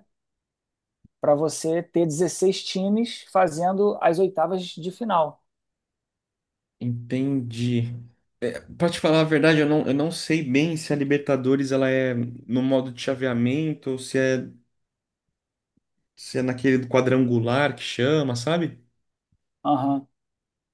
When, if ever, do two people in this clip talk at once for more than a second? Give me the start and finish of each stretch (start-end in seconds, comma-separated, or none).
none